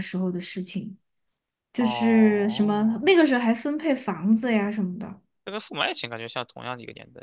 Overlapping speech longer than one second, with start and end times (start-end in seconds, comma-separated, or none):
1.8-3.1